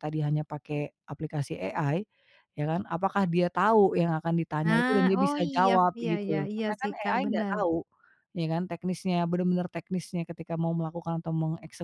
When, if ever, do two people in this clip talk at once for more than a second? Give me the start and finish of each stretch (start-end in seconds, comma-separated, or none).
4.6-7.6